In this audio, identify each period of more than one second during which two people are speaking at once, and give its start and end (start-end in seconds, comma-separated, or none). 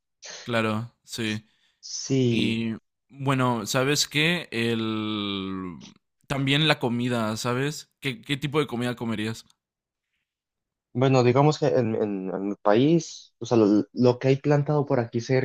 none